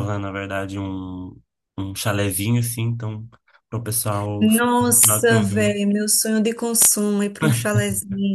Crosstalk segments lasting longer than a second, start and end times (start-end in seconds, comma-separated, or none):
4.4-5.8